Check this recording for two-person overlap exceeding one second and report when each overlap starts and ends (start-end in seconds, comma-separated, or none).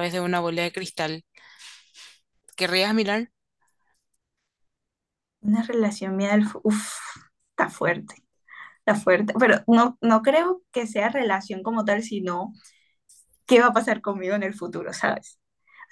none